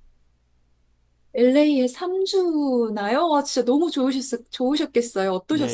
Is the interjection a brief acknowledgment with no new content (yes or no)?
no